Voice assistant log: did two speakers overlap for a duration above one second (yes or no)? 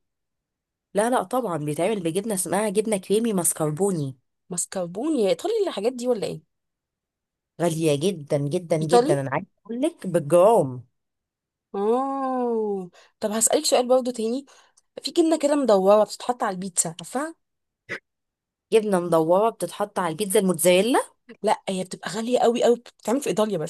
no